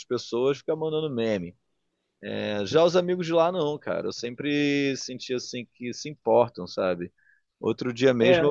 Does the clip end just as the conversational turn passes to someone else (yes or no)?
no